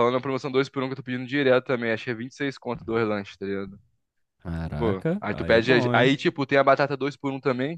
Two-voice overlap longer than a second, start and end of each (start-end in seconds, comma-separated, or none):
4.8-6.1